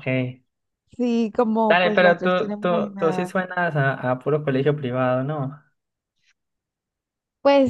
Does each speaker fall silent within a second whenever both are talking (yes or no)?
no